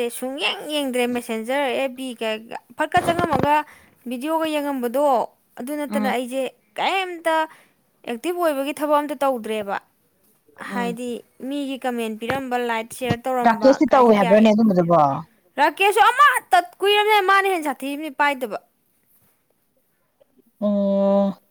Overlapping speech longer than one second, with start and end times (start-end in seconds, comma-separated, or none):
13.4-15.2